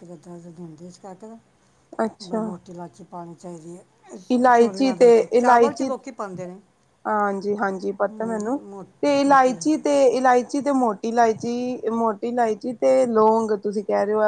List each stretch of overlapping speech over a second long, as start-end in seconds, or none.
4.4-5.9